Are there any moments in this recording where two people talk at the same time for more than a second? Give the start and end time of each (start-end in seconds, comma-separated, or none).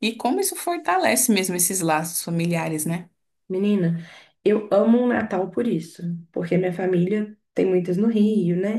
none